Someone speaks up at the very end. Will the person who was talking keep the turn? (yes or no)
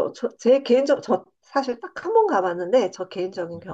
yes